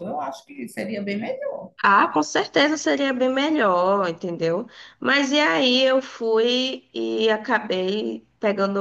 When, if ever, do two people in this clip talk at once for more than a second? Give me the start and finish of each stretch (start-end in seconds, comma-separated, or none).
none